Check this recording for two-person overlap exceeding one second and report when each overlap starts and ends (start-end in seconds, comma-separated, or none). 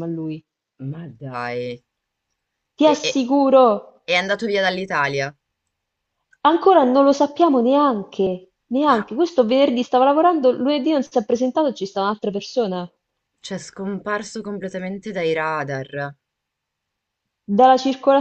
none